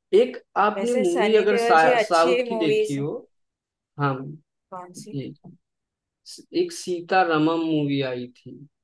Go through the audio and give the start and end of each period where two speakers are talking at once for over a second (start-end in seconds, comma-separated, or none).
0.8-3.0